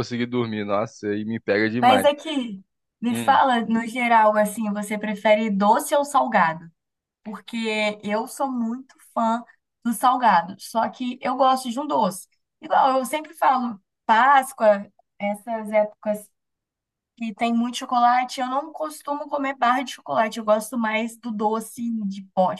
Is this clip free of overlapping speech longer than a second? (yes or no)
yes